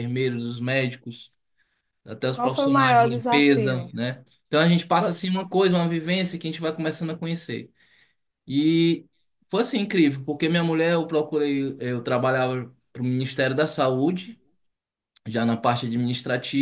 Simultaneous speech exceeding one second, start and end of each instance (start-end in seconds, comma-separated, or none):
2.3-3.9